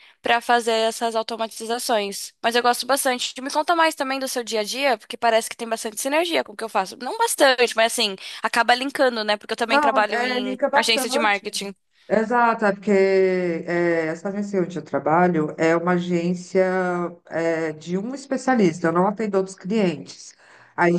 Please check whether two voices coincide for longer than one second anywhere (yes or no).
yes